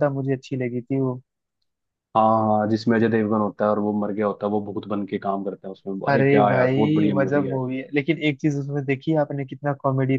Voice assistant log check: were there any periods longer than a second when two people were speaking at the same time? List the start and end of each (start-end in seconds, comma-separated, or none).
6.1-7.6